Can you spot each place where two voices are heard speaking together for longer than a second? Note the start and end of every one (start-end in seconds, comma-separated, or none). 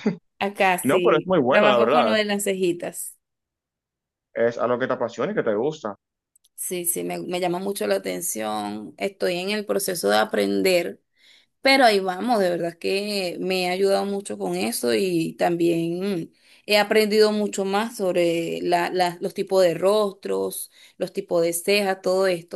0.8-2.2